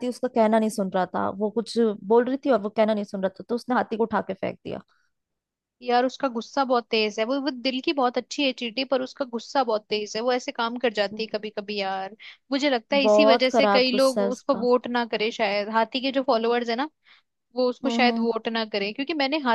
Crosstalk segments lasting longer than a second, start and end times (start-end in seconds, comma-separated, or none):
13.0-14.7